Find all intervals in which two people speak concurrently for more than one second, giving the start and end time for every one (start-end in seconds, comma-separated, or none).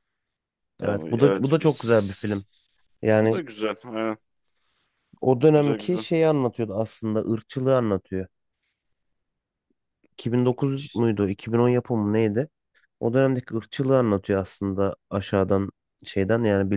0.8-2.5